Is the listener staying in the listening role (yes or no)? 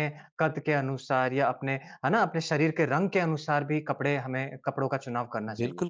no